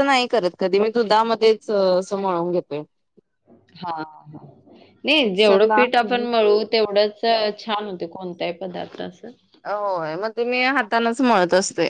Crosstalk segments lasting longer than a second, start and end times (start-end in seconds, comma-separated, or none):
none